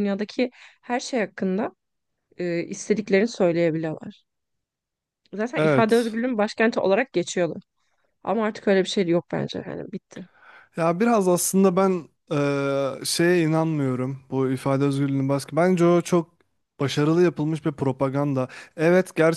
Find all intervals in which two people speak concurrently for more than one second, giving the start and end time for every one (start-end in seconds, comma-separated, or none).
none